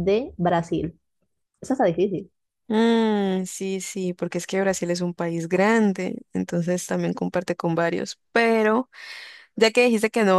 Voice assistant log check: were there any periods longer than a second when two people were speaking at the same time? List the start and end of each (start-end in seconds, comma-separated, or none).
none